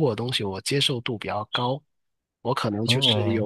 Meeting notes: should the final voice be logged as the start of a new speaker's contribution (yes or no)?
no